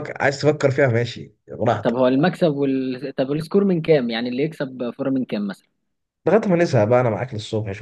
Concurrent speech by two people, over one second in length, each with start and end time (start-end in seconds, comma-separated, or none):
none